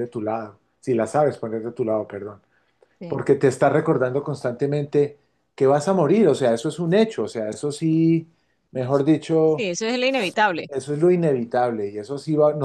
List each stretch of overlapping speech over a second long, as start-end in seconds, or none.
none